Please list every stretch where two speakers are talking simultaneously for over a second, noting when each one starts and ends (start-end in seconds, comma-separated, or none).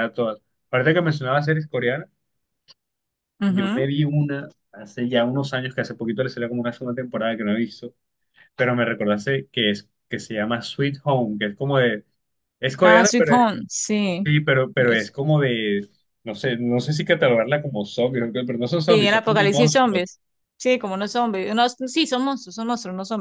18.9-20.1